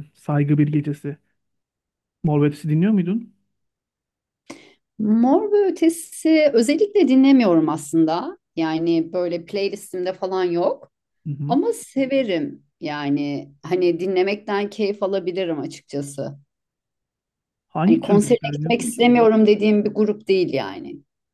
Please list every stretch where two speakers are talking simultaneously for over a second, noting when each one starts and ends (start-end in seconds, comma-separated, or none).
17.8-19.1